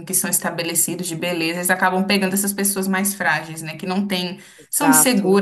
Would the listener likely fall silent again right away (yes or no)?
yes